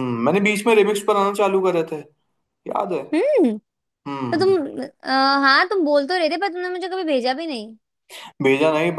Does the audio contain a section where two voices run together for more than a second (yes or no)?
no